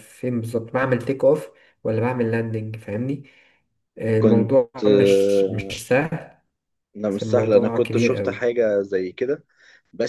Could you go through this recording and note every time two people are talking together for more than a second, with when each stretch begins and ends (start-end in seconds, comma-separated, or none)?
7.1-8.4